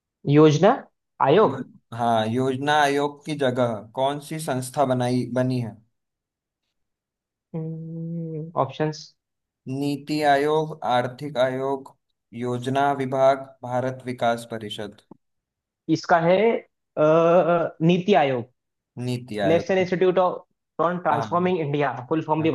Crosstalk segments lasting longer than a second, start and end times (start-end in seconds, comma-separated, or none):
none